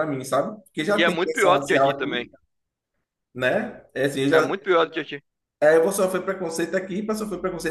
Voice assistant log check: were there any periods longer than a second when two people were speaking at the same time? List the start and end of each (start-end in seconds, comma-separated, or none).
0.9-2.3